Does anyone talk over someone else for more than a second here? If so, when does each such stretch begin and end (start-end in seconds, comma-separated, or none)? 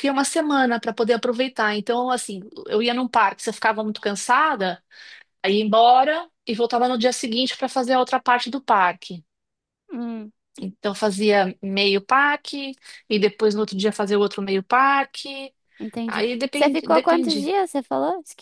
16.1-17.5